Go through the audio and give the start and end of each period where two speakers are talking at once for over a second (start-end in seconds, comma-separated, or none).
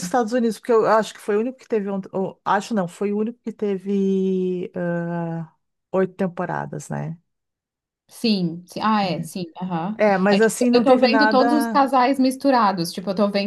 10.0-11.8